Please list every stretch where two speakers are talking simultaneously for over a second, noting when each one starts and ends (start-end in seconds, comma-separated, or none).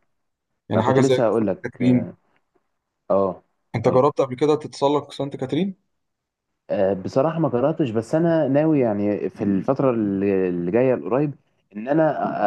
0.7-2.1